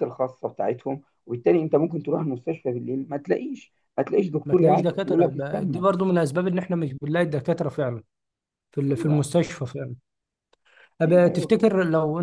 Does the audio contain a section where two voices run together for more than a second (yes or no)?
yes